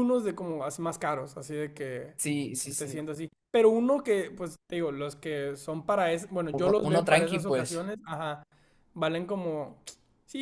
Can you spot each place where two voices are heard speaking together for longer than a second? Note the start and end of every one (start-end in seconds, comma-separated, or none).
6.5-7.8